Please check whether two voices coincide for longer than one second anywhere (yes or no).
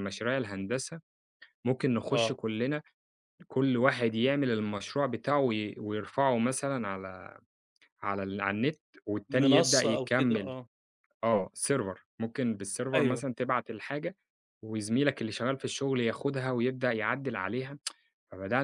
yes